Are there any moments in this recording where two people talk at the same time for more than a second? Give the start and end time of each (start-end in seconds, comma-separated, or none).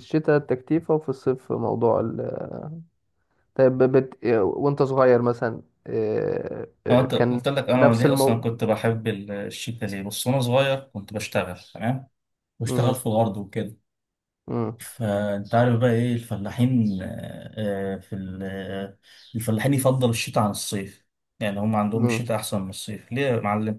6.9-8.4